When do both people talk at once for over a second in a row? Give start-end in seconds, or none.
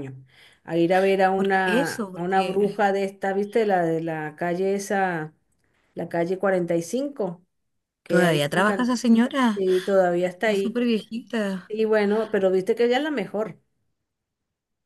1.3-2.6